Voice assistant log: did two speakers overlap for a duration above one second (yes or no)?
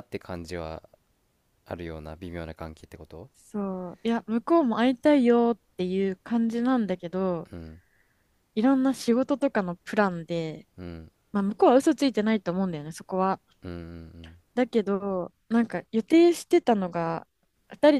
no